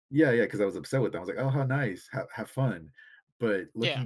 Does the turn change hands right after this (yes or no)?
no